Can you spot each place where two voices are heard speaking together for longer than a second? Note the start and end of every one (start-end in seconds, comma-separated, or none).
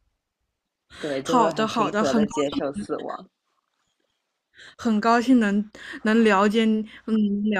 1.2-2.8